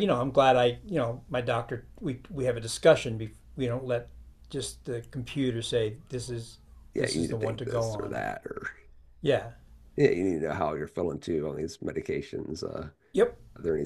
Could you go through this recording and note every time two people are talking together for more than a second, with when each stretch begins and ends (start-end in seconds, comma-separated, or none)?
7.0-8.2